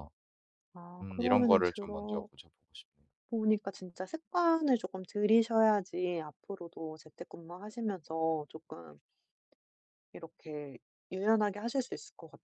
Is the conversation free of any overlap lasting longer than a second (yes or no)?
no